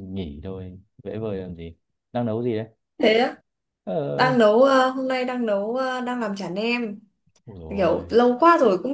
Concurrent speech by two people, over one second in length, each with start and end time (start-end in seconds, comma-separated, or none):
none